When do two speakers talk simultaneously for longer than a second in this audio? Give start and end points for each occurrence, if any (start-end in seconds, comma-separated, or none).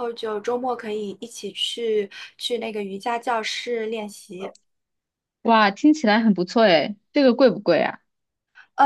none